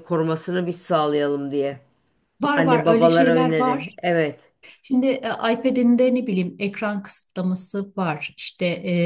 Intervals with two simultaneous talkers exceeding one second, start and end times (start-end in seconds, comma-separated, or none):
2.6-4.0